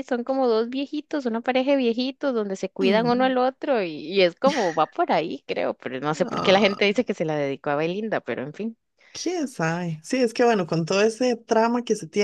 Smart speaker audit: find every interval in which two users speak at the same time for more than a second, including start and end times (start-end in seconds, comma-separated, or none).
none